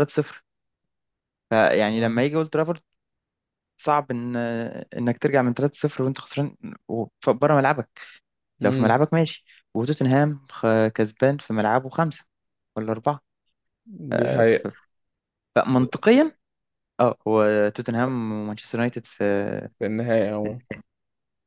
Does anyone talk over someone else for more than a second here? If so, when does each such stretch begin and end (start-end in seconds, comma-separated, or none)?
none